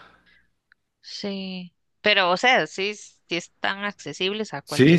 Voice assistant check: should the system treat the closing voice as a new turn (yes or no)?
yes